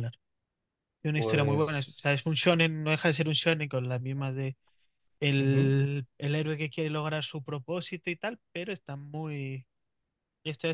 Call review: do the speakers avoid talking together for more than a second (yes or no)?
no